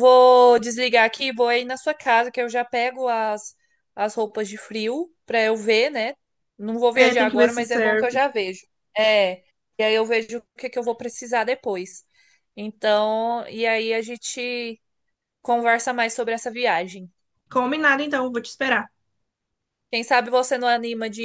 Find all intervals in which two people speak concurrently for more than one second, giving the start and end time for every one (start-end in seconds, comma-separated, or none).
6.9-8.2